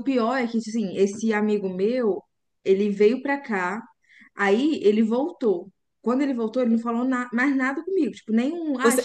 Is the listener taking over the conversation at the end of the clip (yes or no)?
yes